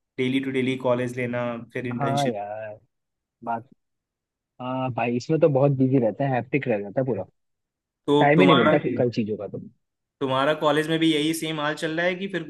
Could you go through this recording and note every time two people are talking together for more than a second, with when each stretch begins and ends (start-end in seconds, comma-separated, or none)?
none